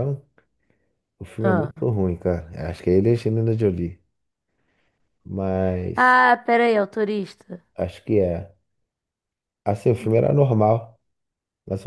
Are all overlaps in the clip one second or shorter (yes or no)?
yes